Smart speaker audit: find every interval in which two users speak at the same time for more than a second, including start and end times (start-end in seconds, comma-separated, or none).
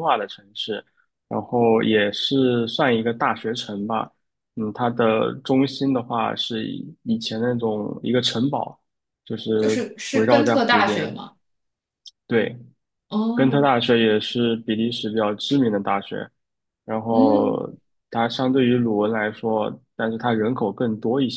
9.6-11.1